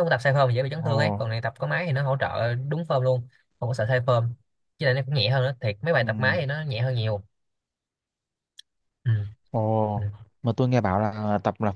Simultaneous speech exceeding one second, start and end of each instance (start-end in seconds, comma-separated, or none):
none